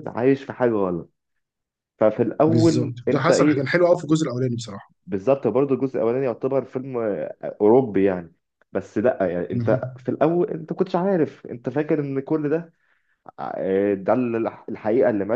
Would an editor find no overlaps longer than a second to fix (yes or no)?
no